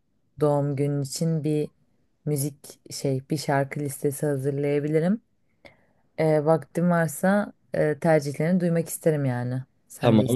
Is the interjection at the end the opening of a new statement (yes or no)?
yes